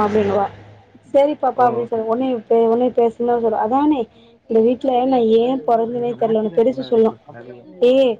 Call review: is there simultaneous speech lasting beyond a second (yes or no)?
yes